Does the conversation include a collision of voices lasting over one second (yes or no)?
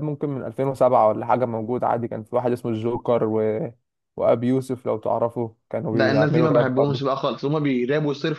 yes